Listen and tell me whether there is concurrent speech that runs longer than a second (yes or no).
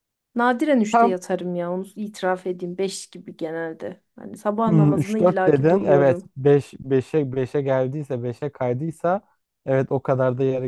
yes